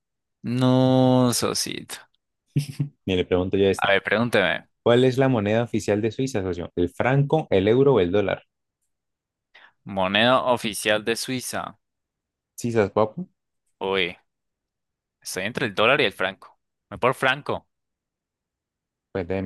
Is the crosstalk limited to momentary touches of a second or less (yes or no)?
yes